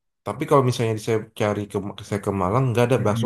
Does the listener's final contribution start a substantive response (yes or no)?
yes